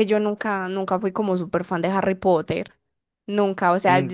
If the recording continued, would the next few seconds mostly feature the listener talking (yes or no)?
no